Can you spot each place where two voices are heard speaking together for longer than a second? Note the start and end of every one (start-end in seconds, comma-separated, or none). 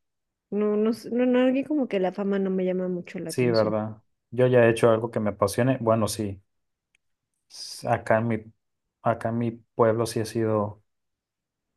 none